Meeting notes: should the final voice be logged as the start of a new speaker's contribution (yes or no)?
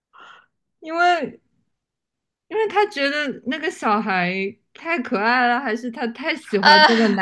no